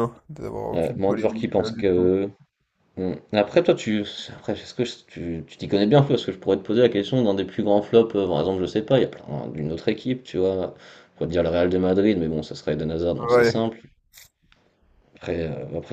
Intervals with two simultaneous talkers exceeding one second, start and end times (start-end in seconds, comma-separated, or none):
0.7-2.1